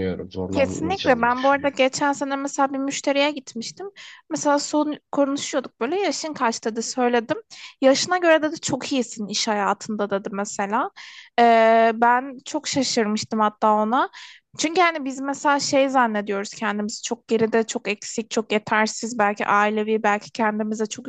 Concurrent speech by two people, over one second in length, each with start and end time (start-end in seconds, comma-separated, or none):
0.5-1.8